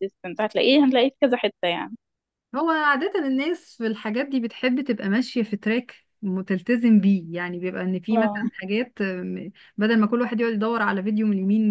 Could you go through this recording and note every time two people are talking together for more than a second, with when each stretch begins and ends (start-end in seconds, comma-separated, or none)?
none